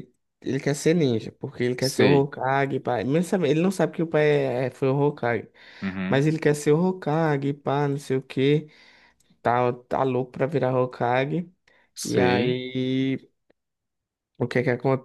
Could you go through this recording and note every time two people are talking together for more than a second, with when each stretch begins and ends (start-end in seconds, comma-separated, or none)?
none